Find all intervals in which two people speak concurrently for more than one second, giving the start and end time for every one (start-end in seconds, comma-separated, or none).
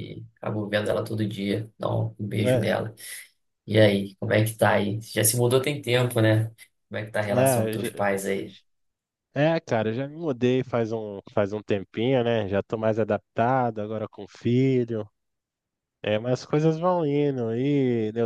none